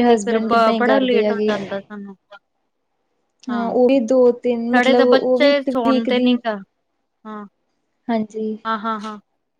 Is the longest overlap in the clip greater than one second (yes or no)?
yes